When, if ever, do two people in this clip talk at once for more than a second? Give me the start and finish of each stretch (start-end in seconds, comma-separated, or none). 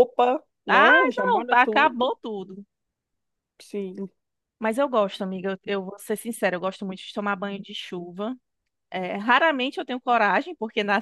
0.7-2.1